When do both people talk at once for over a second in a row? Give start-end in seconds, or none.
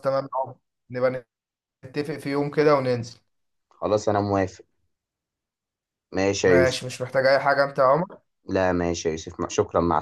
none